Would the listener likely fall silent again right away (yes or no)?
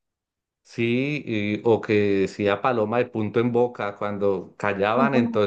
yes